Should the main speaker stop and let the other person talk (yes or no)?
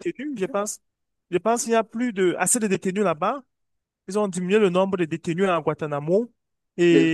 no